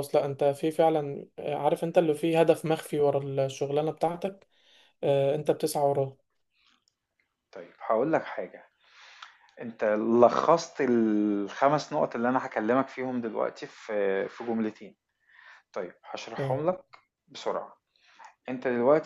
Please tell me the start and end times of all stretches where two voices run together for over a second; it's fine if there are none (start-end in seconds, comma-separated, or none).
none